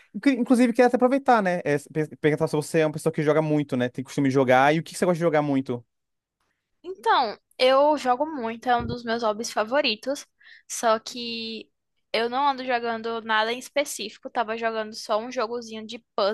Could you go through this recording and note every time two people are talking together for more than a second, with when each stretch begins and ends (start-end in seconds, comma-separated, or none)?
none